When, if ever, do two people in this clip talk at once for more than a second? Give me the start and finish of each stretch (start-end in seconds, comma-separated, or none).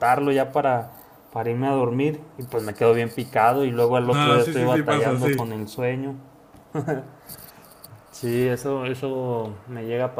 4.0-5.5